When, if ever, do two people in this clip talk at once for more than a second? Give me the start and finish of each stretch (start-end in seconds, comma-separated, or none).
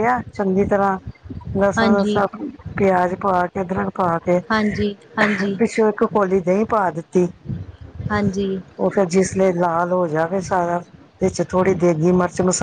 none